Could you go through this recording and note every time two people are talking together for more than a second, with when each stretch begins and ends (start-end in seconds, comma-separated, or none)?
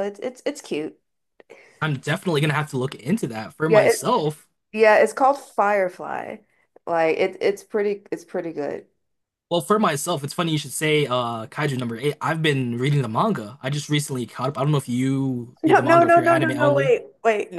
15.6-17.0